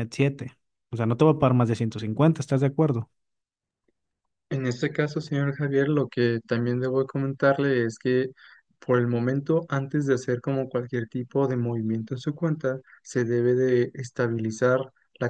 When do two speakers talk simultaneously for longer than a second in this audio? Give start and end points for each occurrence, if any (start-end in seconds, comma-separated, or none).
none